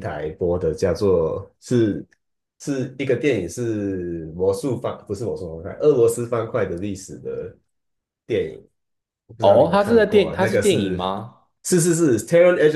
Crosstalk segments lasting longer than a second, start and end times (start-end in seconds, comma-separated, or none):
9.4-11.0